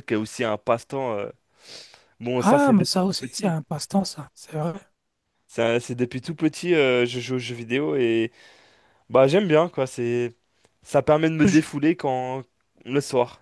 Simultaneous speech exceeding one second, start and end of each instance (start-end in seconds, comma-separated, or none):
2.3-3.6